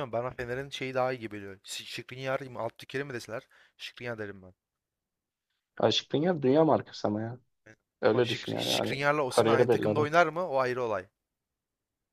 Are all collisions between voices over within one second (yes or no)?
no